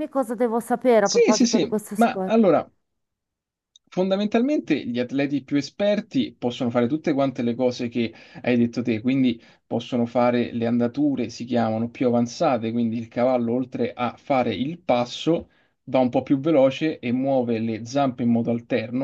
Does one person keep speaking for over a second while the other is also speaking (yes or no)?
yes